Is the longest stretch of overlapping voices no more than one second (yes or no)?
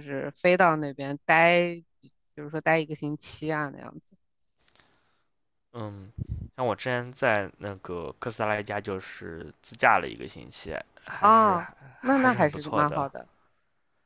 no